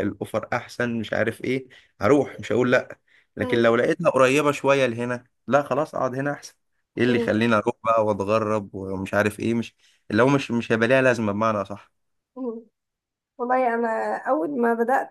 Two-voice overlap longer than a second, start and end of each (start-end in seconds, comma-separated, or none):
none